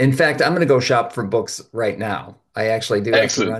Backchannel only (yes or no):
yes